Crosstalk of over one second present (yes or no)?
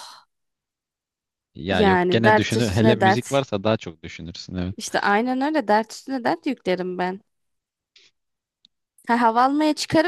yes